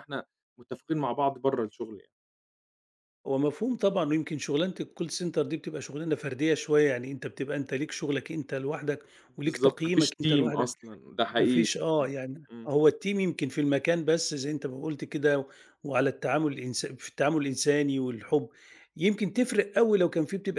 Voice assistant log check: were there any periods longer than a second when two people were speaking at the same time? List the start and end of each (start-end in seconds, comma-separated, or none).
9.4-10.7